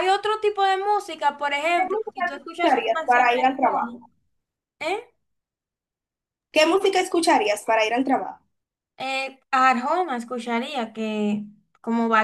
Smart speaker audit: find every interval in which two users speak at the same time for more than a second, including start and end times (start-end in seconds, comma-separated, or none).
1.7-3.9